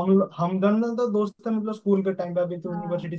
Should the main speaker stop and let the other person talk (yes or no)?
no